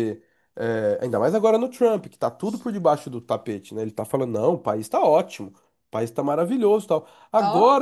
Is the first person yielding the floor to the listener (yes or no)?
no